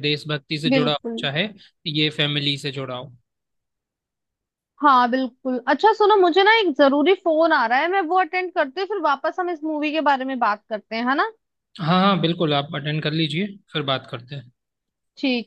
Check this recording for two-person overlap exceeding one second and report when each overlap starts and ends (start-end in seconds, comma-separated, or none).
none